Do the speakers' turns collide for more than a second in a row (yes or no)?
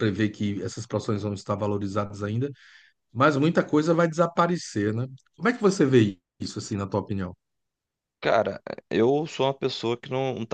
no